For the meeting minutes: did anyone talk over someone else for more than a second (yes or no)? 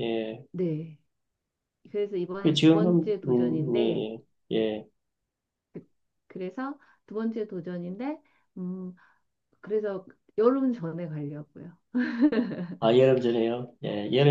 yes